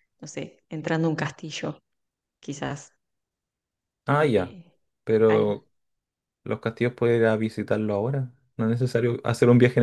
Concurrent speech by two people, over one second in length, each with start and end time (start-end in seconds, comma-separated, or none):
none